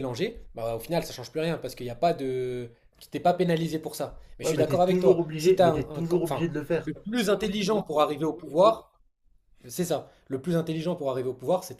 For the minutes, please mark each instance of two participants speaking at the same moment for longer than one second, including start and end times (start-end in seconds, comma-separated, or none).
4.4-6.9